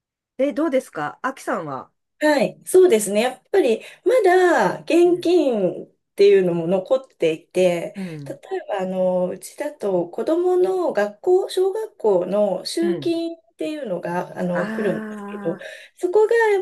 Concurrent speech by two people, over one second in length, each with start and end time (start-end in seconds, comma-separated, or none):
none